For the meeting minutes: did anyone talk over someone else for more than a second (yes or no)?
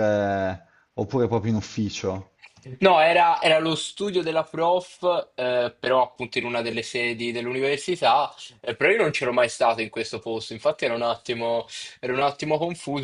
no